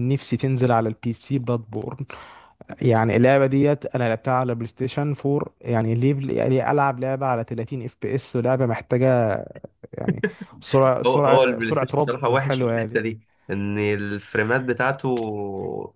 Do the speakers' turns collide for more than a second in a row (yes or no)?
yes